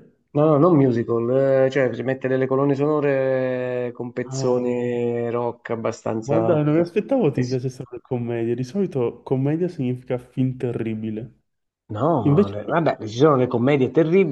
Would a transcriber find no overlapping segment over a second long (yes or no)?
yes